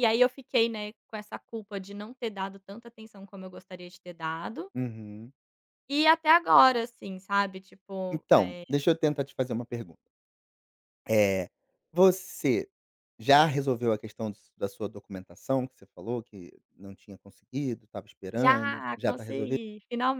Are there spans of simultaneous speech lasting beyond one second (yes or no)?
yes